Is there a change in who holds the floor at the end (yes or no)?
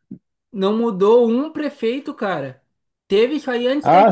yes